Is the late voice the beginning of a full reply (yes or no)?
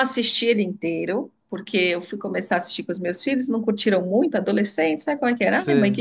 no